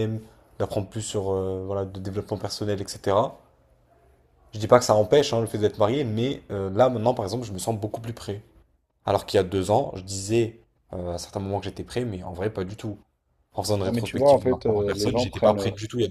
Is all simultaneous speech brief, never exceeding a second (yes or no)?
no